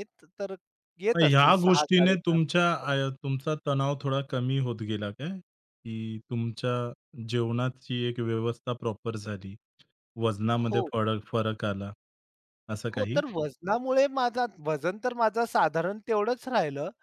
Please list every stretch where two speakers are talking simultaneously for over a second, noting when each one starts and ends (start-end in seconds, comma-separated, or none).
1.2-2.5